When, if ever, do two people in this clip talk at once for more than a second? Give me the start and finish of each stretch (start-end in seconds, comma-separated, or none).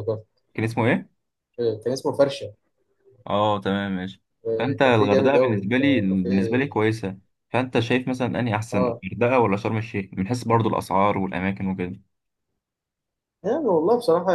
4.6-6.8